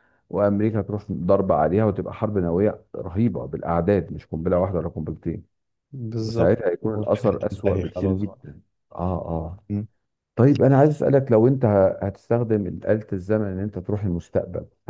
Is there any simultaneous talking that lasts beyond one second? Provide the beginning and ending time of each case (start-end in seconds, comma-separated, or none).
6.2-8.5